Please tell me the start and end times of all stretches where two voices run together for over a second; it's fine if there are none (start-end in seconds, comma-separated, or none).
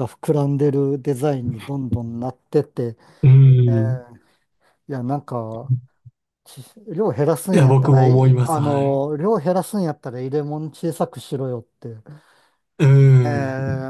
7.5-9.0